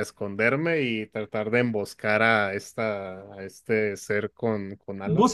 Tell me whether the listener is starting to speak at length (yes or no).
yes